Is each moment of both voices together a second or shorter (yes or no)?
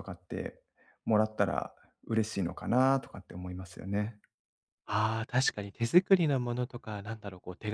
yes